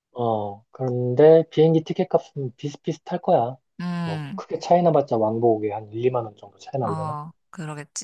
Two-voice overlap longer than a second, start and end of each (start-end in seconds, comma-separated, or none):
none